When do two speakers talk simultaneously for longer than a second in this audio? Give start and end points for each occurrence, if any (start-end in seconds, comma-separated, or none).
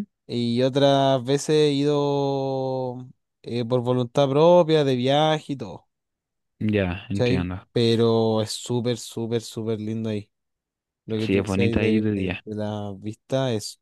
11.2-12.4